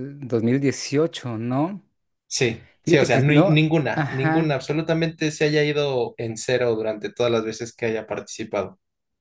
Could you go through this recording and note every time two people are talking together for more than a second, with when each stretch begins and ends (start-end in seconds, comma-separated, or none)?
2.8-4.6